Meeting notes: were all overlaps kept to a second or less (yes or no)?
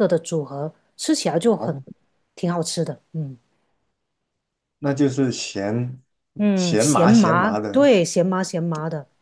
no